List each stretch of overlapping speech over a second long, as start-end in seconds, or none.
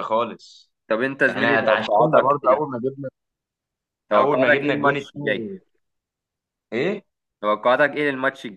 1.3-2.8, 4.2-5.5